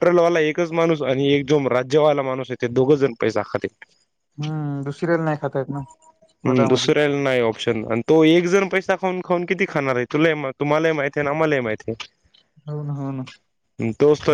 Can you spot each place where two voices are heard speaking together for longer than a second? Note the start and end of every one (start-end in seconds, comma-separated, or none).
none